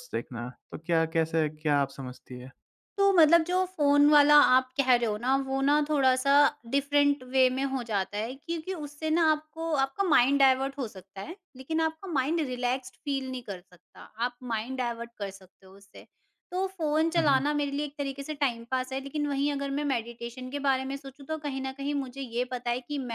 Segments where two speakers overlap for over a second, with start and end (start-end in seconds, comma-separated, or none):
none